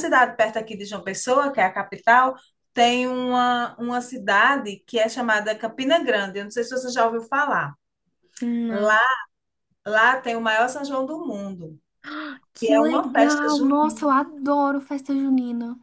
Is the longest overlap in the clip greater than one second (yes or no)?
yes